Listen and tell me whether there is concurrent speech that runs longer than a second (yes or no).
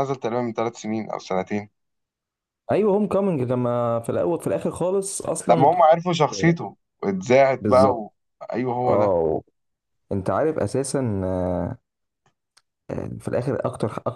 no